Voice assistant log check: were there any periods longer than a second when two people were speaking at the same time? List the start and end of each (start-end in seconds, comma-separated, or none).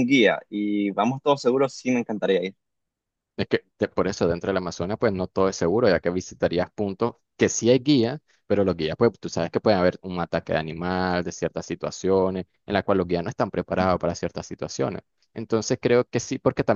none